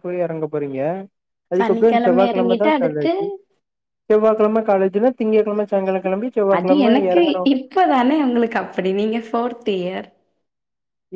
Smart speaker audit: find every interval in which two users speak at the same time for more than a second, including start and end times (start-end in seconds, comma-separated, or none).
1.6-3.1